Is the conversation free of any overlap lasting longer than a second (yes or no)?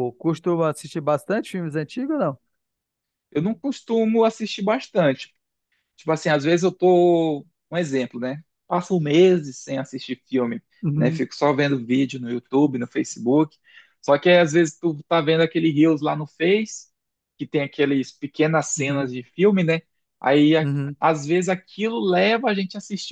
yes